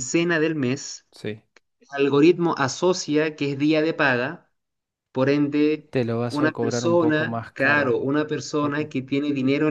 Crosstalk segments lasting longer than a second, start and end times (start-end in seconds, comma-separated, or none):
5.9-8.0